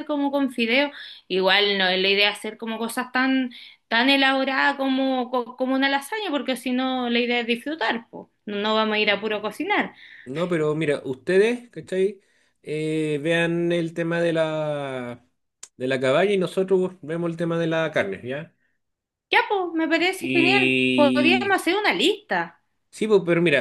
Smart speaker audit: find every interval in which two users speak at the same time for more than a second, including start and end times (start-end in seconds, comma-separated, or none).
20.2-21.6